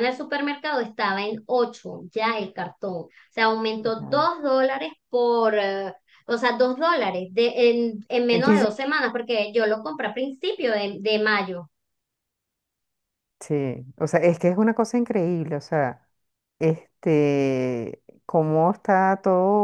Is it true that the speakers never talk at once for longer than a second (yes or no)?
yes